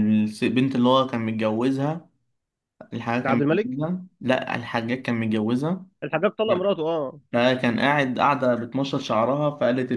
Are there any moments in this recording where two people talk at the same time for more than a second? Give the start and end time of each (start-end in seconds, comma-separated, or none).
none